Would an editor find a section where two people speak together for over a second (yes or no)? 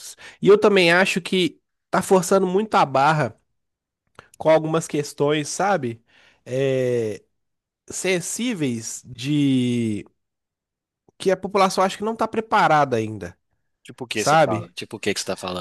no